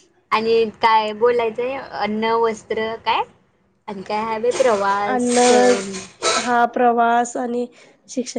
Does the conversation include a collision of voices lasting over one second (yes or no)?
no